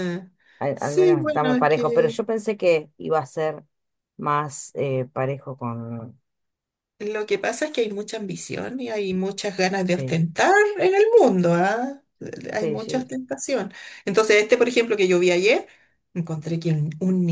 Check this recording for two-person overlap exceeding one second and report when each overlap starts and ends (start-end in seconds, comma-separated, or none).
0.7-2.2